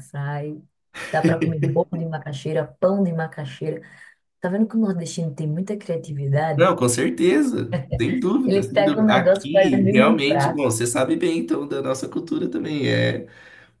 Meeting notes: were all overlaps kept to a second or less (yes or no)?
no